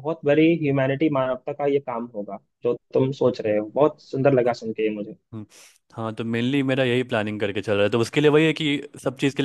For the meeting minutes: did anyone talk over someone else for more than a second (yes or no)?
no